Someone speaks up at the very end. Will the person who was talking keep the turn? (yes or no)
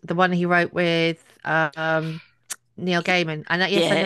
no